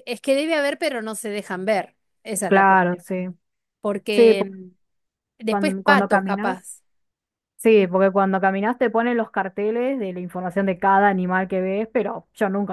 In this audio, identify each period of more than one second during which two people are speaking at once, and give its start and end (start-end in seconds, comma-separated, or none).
5.5-6.7